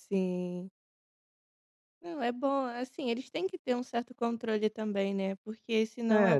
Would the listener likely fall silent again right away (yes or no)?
yes